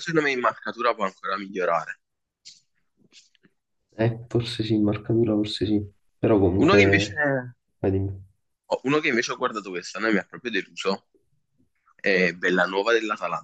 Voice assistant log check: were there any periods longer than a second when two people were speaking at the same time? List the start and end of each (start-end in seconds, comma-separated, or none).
none